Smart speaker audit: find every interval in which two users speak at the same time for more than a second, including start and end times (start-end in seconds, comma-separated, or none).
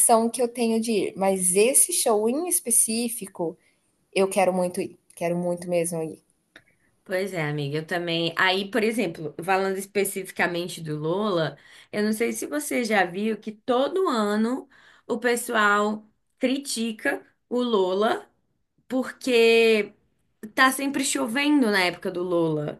none